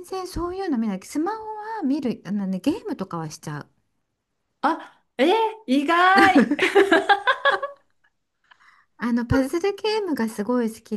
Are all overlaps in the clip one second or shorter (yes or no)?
yes